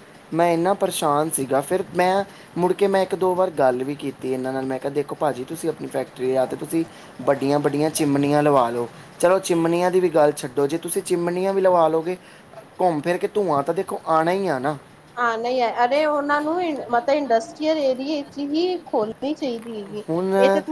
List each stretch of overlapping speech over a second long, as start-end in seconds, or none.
none